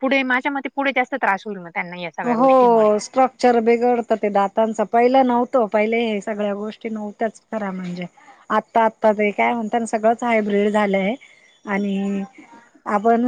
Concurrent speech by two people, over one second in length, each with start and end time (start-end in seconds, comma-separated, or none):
none